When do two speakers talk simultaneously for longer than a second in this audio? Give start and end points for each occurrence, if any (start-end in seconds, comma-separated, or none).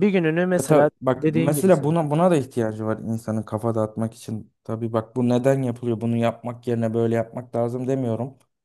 0.6-2.0